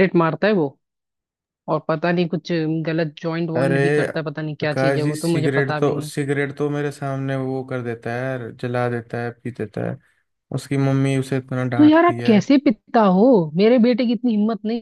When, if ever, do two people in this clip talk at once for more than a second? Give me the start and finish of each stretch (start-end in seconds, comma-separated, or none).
4.6-6.1